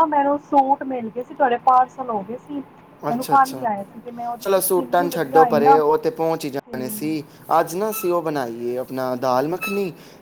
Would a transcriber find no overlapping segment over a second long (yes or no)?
no